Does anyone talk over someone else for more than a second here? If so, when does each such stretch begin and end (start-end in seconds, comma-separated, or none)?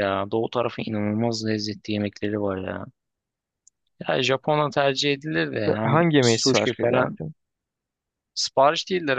5.5-7.2